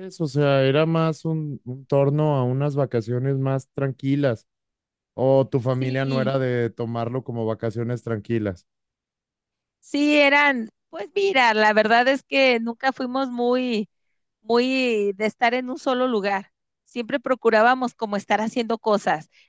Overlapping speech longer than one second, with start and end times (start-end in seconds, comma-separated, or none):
none